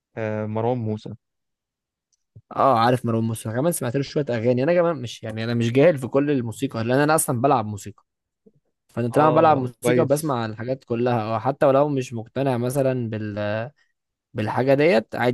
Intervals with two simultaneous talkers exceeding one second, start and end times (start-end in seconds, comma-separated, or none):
9.1-10.4